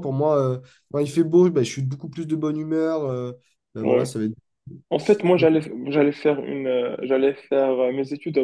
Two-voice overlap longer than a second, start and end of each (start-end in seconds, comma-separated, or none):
none